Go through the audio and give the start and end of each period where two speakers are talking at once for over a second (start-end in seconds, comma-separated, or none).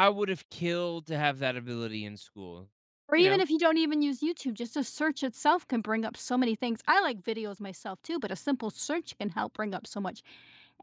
none